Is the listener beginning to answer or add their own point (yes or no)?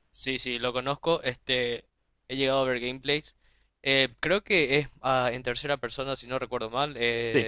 no